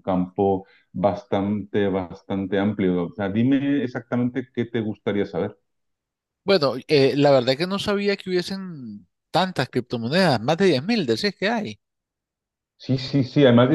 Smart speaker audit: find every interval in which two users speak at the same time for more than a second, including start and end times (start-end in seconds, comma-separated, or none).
none